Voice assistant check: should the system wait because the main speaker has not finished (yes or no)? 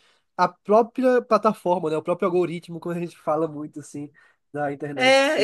no